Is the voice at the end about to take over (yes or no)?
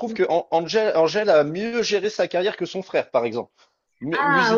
no